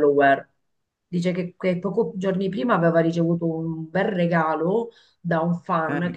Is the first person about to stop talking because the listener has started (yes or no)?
no